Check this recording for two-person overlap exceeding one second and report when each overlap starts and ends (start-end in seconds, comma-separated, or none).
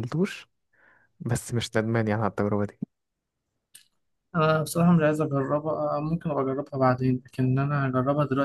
none